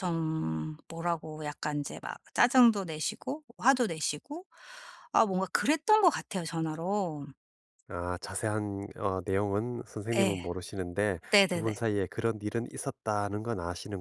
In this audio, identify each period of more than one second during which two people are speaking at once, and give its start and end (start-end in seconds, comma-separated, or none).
none